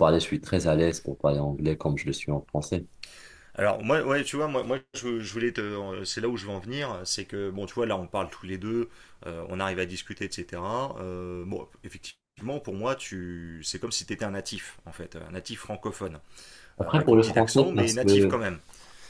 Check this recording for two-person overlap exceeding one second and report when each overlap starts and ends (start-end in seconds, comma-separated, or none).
16.8-18.4